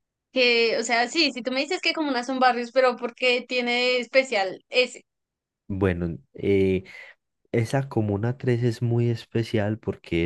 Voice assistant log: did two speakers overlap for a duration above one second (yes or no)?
no